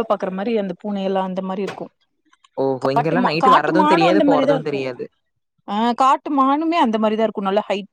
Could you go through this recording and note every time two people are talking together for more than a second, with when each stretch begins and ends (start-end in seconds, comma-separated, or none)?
3.0-4.8